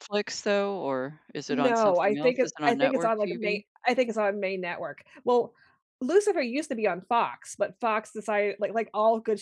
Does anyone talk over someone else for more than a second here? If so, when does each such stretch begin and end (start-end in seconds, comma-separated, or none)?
1.5-3.6